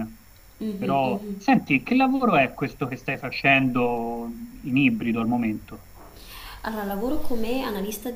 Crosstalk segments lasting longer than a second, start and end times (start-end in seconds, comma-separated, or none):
none